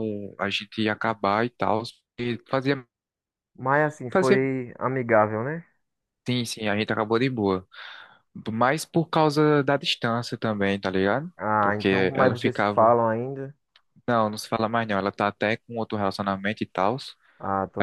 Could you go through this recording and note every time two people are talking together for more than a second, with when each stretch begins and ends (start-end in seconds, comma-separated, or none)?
11.4-13.0